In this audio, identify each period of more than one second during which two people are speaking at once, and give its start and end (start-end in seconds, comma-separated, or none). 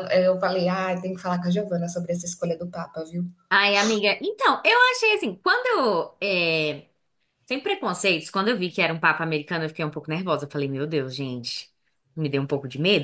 none